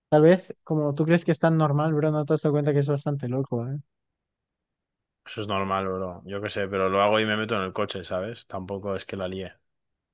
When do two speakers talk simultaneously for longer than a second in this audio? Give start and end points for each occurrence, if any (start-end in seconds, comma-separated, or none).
none